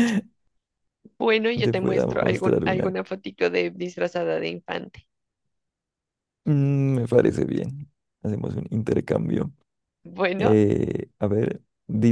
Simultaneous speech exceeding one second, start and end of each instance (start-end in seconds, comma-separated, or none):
1.6-3.0